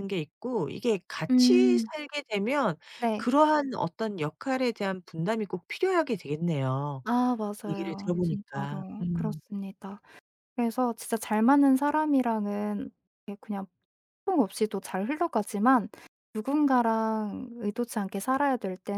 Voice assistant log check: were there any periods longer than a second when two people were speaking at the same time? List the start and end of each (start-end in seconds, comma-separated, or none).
7.7-9.4